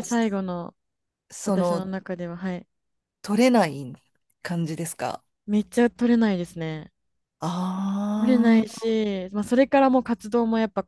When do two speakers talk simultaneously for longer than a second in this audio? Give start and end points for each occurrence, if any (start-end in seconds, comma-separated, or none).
none